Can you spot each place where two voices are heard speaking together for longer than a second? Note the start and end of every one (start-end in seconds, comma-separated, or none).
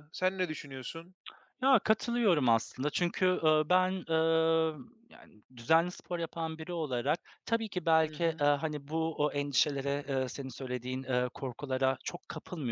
none